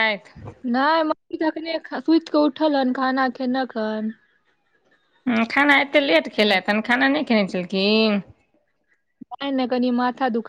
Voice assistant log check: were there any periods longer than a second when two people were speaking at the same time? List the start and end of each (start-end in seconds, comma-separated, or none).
none